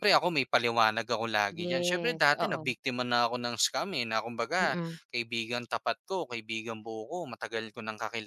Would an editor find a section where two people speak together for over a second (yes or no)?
yes